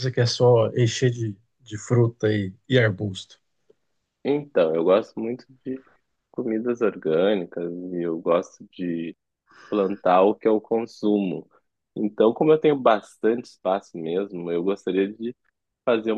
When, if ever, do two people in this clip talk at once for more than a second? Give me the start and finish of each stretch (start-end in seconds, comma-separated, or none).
none